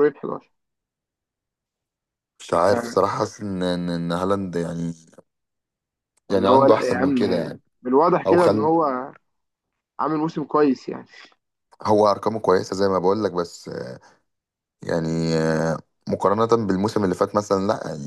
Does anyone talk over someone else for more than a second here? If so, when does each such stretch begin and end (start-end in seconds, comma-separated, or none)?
6.3-7.6